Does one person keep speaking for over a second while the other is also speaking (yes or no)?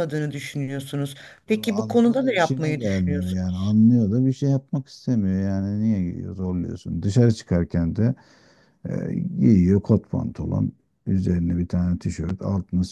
yes